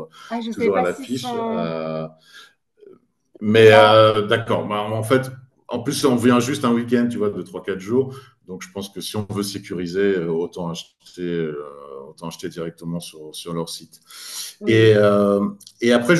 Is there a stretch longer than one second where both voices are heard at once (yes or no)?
yes